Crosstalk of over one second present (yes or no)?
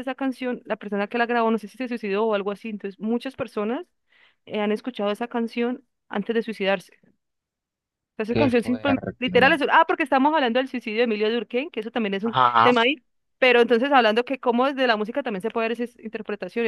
yes